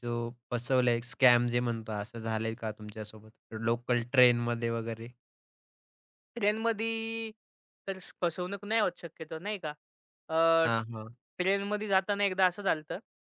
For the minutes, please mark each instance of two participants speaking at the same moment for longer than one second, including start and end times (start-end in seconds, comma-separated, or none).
none